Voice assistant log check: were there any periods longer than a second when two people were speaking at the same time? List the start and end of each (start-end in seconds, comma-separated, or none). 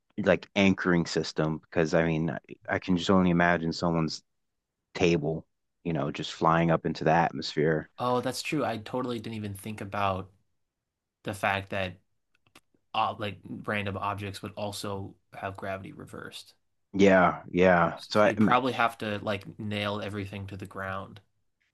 none